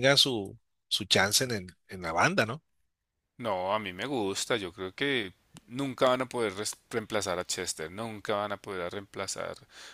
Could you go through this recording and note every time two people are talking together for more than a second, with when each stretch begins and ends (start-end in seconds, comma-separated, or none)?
none